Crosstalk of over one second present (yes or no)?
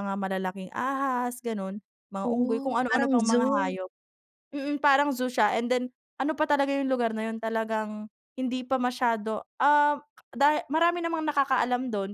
yes